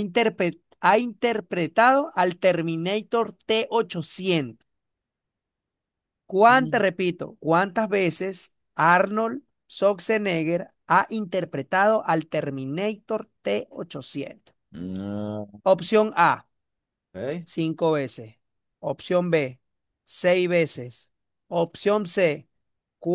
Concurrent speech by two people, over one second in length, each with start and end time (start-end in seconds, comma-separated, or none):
none